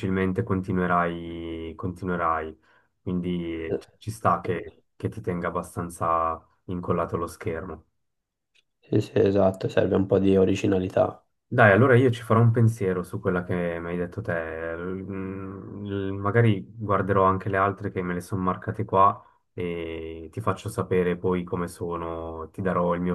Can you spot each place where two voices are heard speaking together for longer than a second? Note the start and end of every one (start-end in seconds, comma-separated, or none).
none